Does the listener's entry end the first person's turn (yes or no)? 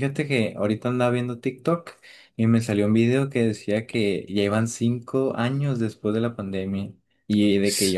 no